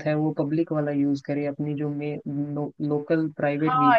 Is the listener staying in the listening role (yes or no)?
no